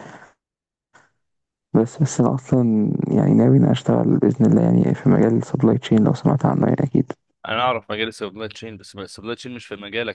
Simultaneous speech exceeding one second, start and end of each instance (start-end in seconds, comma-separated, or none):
none